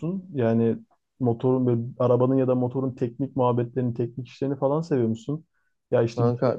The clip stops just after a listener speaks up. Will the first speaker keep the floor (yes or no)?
yes